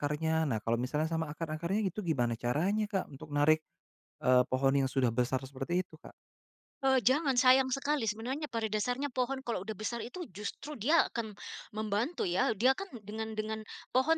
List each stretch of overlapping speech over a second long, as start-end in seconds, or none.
none